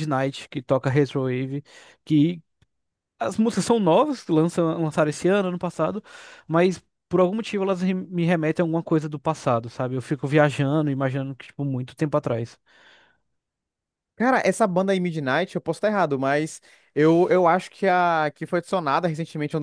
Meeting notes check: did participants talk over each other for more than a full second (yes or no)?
no